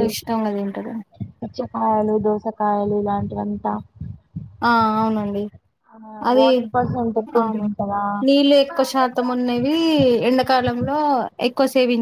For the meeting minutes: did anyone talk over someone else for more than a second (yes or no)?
no